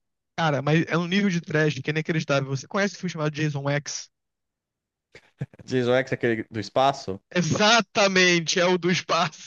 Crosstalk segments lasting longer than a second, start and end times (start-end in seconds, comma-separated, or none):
none